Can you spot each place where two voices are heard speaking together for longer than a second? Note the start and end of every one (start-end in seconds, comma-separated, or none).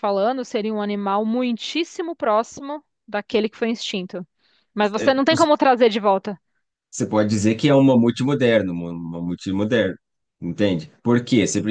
none